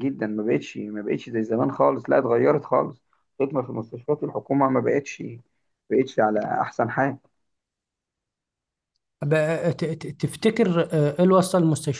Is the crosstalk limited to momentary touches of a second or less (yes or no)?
yes